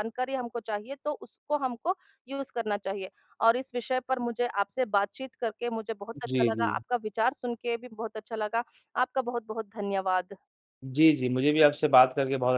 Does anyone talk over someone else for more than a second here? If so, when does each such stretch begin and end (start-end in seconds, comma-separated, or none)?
none